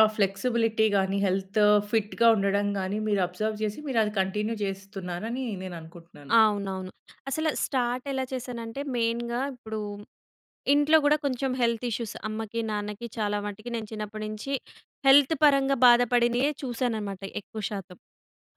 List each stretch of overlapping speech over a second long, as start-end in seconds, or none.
none